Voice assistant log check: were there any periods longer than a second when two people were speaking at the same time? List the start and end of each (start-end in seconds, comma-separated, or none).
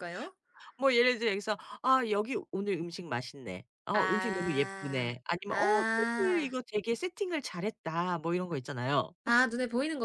3.9-6.5